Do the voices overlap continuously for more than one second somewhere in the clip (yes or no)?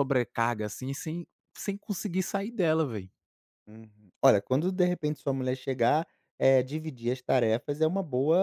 no